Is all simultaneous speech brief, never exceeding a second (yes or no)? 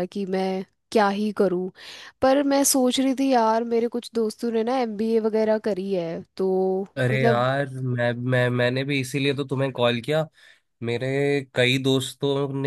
yes